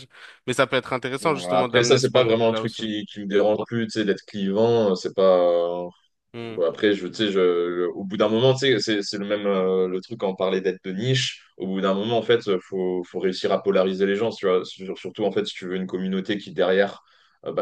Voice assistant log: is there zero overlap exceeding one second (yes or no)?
no